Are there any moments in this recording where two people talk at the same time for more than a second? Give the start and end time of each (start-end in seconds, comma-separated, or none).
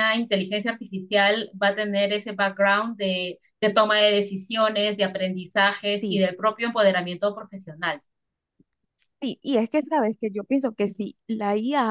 none